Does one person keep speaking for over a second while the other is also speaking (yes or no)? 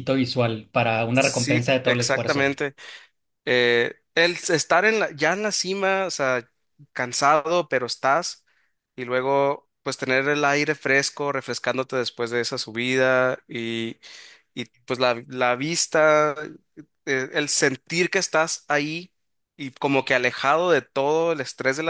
yes